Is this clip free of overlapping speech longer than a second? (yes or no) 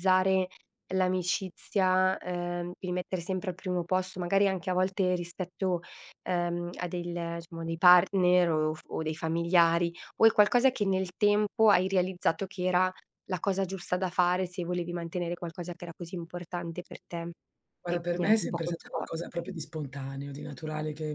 no